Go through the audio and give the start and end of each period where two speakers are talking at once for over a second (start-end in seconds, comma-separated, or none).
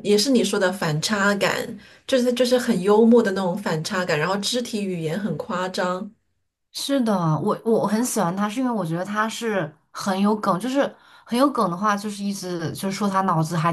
none